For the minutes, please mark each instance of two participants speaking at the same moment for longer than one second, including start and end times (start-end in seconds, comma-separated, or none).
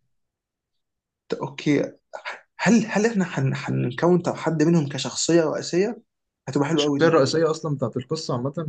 none